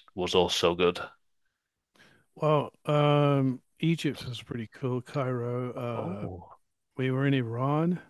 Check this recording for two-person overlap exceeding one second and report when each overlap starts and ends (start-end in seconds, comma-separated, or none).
none